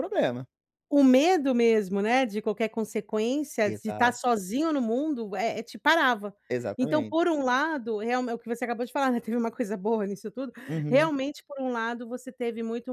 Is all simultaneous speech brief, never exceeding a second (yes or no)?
yes